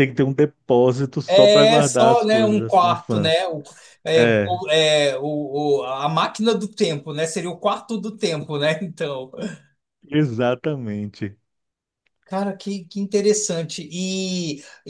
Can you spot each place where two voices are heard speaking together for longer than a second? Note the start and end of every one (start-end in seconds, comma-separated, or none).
1.3-3.5